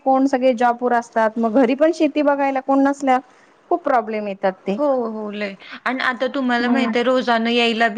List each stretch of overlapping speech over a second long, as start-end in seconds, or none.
none